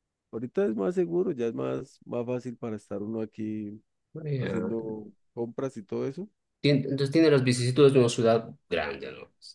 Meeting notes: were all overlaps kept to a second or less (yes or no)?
yes